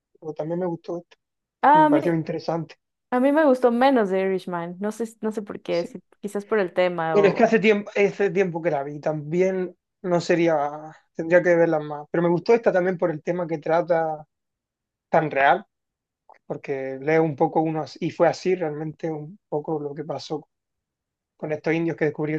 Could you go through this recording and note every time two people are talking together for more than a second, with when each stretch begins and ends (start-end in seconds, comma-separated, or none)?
none